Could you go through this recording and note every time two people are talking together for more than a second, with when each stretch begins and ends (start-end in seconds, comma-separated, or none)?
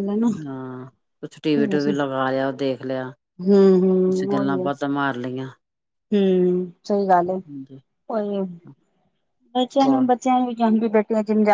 3.5-4.7